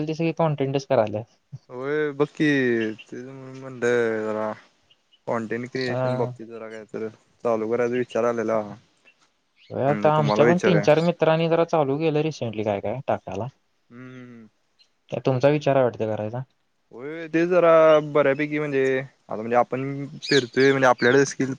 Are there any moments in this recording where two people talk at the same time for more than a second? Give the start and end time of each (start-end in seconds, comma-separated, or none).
none